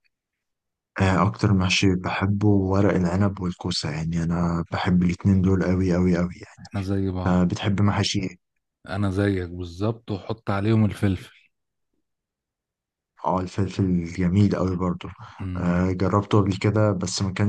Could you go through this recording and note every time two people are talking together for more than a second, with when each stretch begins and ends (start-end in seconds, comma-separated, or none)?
none